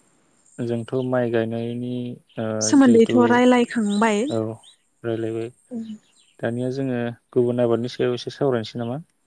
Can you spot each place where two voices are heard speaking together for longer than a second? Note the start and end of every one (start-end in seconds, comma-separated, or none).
2.7-4.2